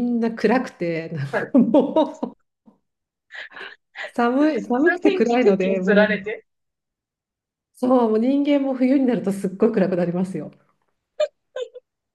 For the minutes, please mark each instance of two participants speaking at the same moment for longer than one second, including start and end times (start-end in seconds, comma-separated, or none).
4.4-6.3